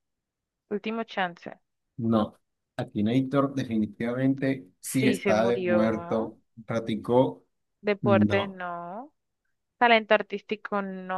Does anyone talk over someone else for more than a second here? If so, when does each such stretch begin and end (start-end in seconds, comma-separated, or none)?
4.8-6.3